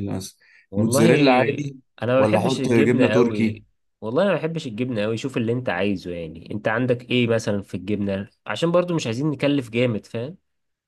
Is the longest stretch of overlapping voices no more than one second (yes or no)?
no